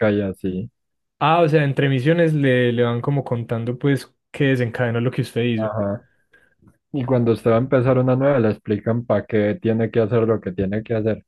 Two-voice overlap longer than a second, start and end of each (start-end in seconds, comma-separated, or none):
none